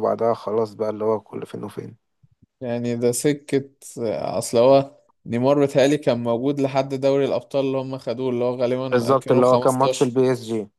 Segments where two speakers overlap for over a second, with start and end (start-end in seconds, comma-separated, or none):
8.9-10.2